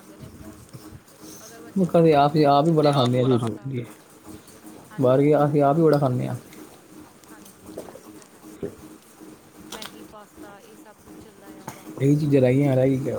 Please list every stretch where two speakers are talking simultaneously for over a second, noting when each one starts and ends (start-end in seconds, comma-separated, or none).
1.8-3.4